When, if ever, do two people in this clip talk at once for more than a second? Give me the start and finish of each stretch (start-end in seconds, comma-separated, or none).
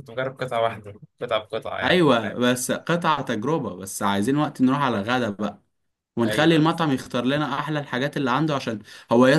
none